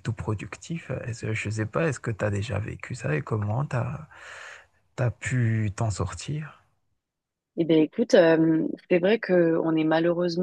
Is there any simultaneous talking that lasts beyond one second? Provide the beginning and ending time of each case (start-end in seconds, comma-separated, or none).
none